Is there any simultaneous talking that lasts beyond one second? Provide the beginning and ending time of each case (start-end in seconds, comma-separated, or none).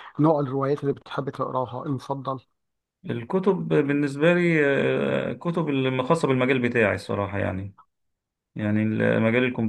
none